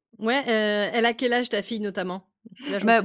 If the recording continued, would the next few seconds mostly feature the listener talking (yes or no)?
yes